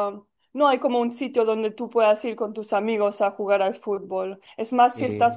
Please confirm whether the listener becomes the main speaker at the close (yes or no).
no